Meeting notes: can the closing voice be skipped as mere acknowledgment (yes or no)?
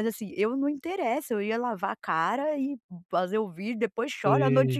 yes